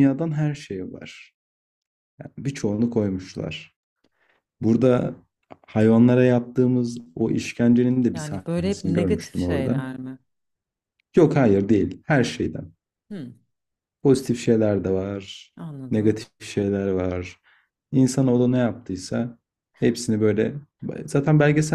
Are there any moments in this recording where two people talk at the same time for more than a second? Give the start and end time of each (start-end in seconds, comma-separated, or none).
8.1-9.8